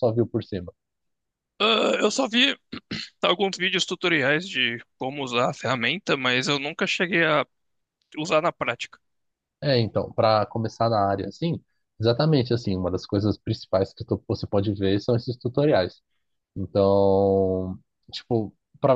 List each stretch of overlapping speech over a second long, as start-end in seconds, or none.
none